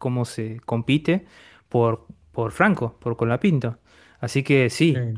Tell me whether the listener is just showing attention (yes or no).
yes